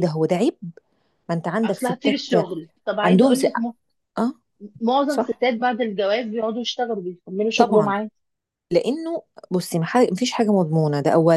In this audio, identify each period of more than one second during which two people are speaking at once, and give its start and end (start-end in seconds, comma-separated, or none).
none